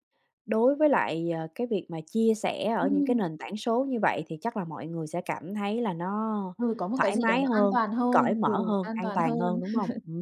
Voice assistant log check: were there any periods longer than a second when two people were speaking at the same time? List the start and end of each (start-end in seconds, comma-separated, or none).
7.0-9.6